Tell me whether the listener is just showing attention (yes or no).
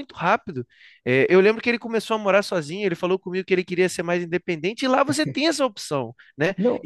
yes